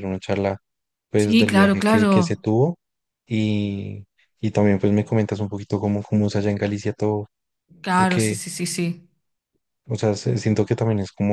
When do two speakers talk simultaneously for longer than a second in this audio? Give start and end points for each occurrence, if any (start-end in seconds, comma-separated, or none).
1.2-2.4